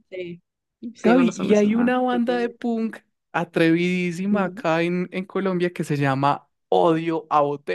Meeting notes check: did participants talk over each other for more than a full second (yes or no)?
yes